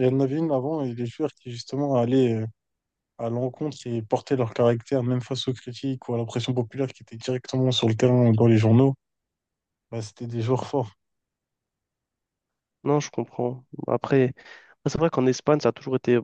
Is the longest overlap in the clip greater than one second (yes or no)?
no